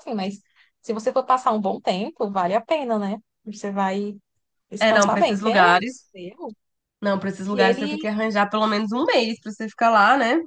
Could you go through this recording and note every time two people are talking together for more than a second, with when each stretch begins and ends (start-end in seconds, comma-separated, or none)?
4.8-6.0